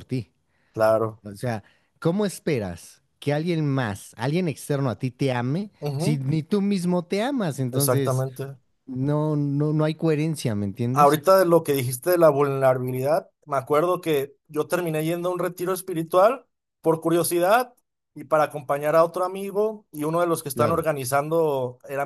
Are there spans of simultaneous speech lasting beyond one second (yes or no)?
no